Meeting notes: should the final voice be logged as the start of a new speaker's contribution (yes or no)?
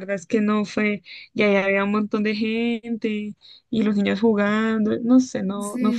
yes